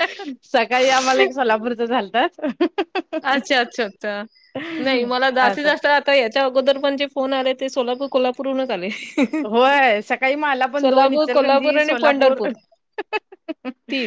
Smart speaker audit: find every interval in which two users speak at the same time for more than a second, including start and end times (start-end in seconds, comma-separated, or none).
10.8-12.4